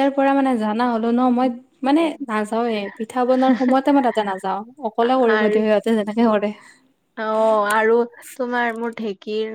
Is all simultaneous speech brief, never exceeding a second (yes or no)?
yes